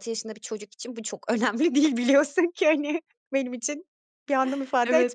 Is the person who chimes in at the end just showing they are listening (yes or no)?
no